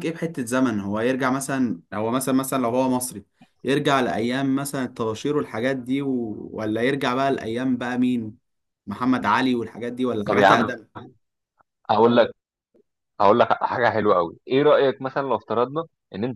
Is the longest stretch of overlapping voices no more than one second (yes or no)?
yes